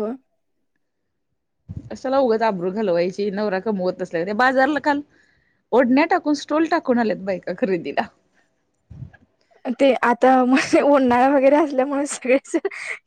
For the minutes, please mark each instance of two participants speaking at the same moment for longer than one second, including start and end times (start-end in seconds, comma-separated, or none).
none